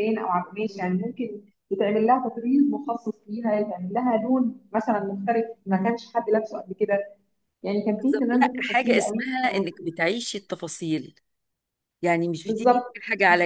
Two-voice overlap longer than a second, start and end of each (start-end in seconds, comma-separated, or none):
8.0-9.3